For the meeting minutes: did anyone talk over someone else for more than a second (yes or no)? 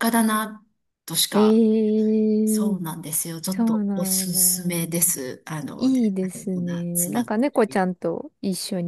yes